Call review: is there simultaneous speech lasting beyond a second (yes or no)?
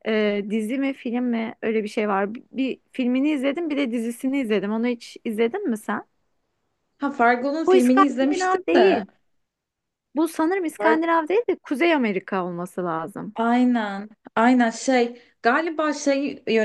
yes